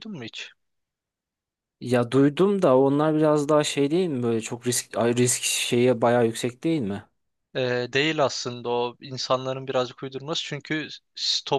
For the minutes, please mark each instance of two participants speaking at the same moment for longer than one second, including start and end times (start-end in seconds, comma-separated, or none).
none